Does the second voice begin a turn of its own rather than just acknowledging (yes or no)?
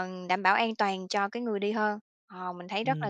yes